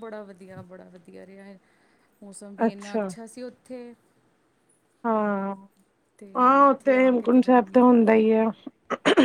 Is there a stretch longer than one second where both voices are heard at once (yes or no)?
yes